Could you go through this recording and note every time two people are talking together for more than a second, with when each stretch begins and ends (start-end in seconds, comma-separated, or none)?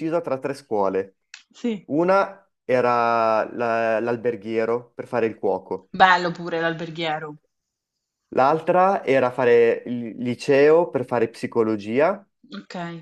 none